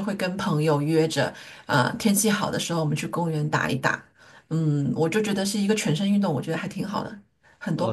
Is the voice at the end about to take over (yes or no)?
yes